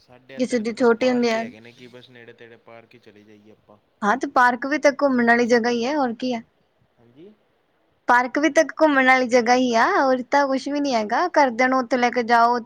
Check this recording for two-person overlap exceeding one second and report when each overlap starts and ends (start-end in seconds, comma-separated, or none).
none